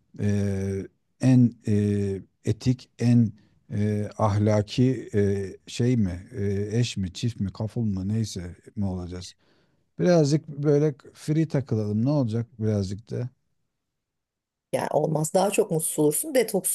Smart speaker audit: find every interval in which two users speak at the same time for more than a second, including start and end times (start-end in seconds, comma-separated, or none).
none